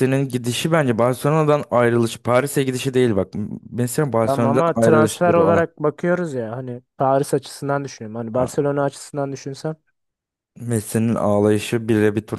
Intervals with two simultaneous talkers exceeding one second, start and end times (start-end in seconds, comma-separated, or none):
4.2-5.6